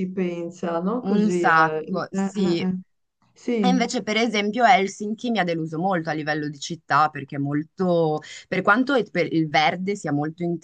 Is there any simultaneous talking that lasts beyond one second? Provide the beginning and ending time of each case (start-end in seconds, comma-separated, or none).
1.0-2.7